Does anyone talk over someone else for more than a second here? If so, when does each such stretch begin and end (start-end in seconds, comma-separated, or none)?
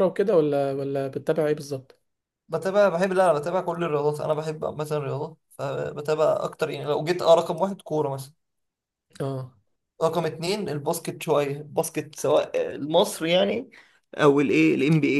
none